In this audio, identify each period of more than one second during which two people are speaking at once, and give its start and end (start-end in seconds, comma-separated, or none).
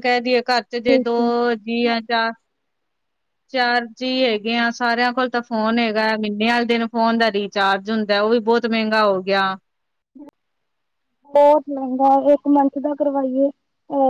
none